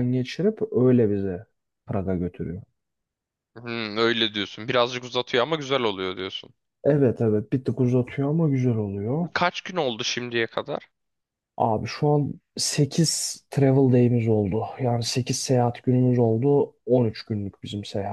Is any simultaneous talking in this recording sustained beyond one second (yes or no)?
no